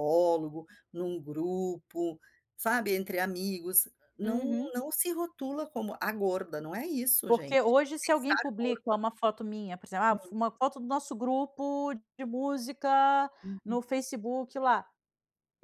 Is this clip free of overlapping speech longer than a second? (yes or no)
no